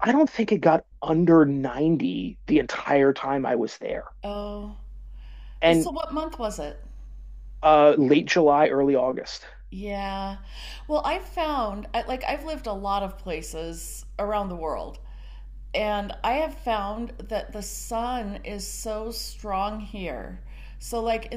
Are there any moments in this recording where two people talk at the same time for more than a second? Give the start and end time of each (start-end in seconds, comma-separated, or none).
none